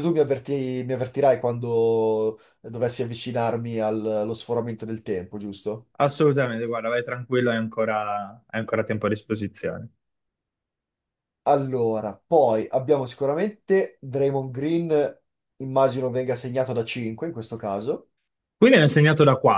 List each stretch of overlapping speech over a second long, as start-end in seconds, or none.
none